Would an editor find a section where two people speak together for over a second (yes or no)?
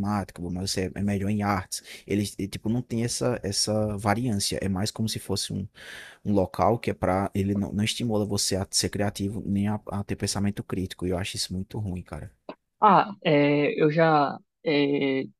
no